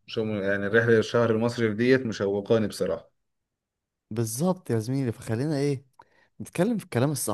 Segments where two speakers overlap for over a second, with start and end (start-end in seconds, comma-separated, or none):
none